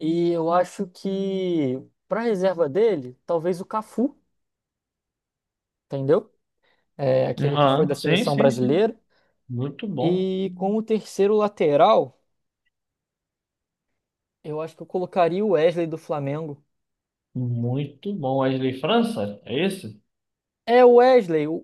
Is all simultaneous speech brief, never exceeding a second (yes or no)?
no